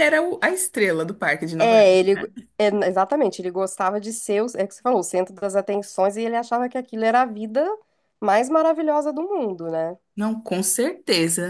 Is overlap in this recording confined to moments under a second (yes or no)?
yes